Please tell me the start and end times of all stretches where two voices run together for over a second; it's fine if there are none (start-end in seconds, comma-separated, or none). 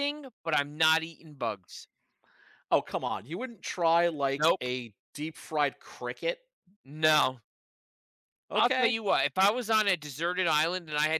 none